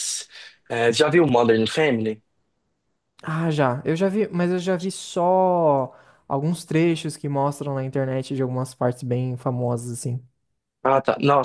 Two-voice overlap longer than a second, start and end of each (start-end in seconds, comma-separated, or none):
none